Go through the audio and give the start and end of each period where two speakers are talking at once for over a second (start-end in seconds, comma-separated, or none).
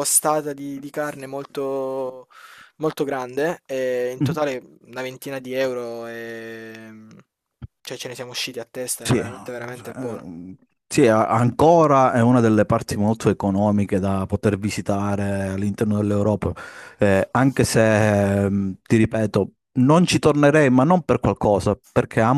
9.0-10.2